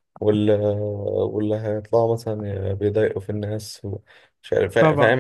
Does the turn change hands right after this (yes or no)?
no